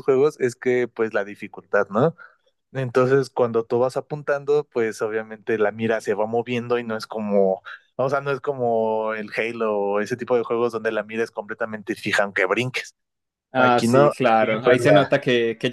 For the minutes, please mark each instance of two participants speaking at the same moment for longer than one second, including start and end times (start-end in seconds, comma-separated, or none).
13.6-15.1